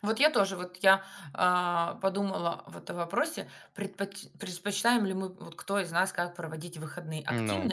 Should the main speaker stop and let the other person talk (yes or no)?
no